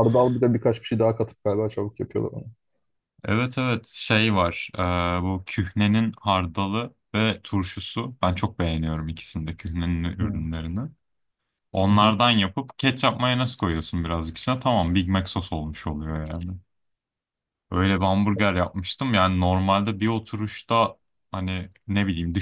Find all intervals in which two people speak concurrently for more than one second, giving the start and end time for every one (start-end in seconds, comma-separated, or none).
none